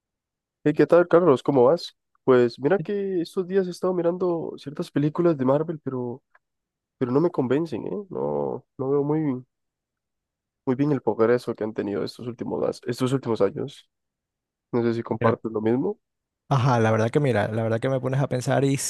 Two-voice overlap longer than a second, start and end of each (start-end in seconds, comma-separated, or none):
none